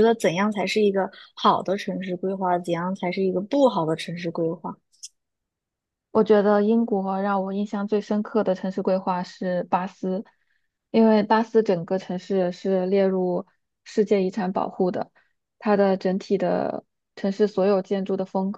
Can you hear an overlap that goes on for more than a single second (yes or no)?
no